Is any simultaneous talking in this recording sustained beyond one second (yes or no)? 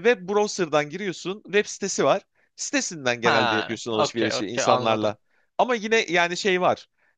yes